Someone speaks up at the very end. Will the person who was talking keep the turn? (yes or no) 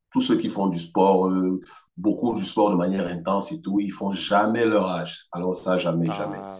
no